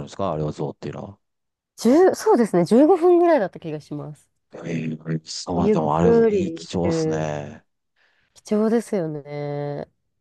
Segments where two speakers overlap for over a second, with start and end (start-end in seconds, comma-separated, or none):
5.6-7.3